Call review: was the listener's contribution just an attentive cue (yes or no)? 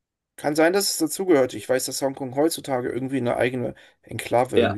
no